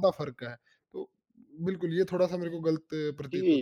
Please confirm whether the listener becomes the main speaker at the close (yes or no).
yes